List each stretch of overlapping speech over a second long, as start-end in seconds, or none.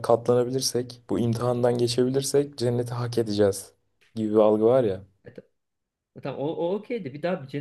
none